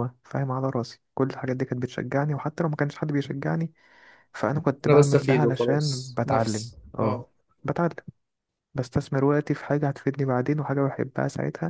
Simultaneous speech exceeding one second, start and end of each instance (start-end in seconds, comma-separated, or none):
4.9-7.2